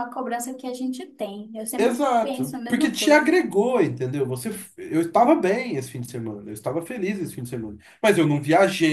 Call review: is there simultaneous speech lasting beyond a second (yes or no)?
yes